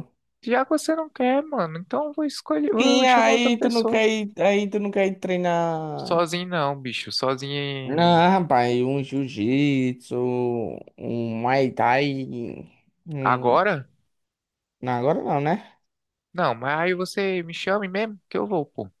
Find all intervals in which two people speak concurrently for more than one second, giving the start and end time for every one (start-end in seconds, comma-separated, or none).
2.8-4.0